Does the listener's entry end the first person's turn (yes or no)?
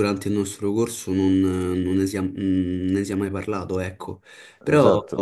no